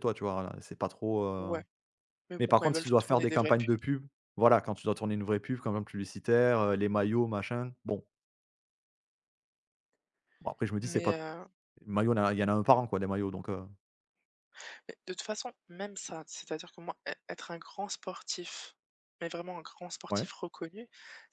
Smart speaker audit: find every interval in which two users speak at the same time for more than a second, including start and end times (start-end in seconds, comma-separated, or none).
2.4-3.7